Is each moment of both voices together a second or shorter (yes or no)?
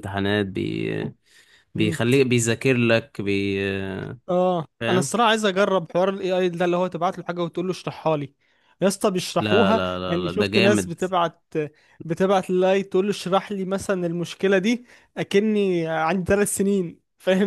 no